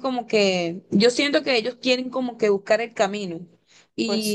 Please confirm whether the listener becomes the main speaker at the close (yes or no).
no